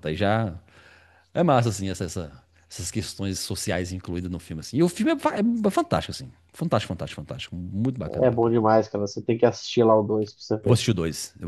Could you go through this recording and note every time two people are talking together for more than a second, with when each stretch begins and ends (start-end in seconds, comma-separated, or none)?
none